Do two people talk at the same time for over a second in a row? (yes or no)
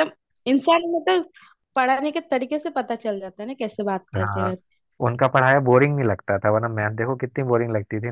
no